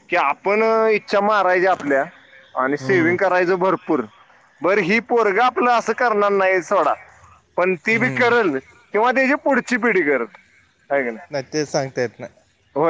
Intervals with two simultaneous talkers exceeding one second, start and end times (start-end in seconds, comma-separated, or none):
none